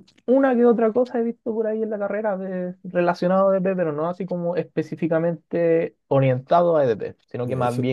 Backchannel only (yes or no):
yes